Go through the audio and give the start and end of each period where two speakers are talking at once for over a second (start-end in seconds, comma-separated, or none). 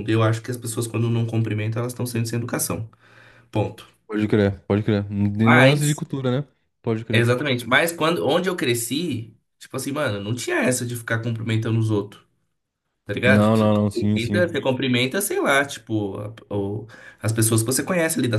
13.3-14.5